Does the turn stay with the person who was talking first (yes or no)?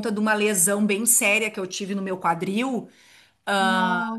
yes